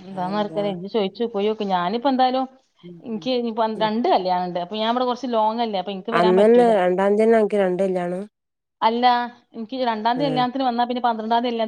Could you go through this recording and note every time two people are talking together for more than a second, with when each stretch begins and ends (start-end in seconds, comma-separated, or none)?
none